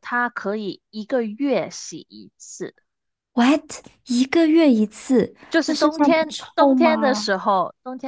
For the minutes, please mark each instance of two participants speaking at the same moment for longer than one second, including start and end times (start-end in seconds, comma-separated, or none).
5.5-7.3